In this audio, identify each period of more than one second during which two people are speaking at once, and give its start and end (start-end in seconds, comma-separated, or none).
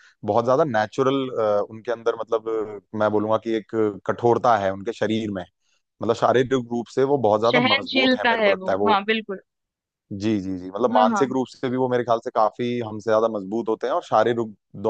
7.5-9.0